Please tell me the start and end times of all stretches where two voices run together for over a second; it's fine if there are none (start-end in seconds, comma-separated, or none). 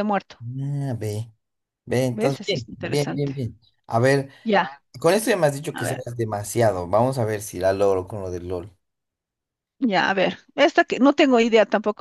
2.1-3.3